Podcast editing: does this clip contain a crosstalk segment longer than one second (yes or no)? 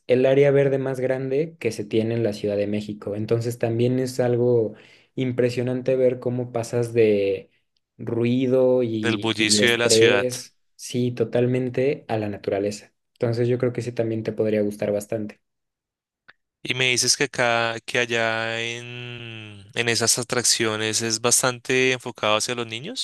yes